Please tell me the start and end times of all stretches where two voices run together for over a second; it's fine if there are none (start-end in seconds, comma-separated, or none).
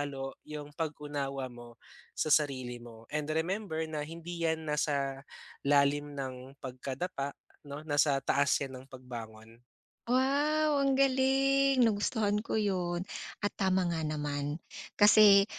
none